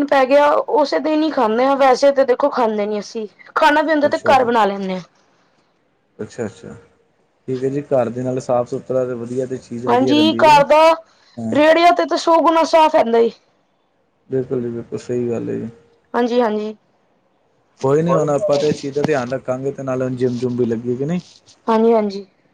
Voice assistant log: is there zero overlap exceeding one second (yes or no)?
yes